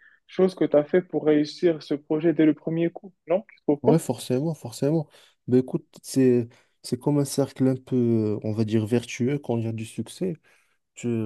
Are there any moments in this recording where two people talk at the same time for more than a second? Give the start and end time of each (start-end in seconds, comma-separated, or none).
none